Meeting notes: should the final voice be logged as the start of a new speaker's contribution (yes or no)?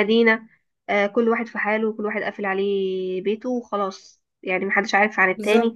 no